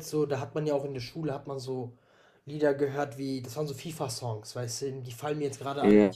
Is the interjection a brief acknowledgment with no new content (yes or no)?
yes